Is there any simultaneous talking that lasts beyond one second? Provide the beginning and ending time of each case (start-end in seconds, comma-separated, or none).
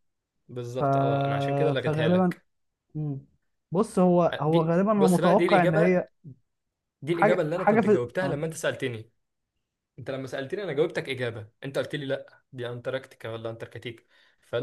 4.5-5.9, 7.1-8.4